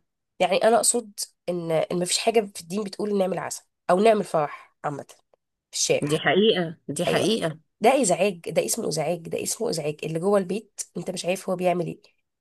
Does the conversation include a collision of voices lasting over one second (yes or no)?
no